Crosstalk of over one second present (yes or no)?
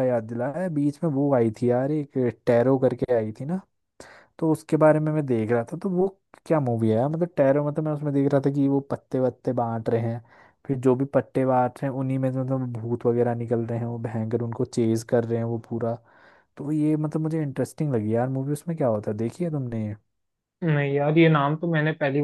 no